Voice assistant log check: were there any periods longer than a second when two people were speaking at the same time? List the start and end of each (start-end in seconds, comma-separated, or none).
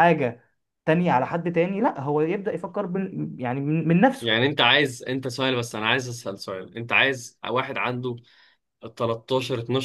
none